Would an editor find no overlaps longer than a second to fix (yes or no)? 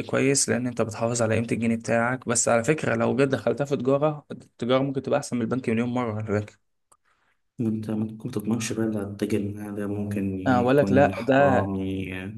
no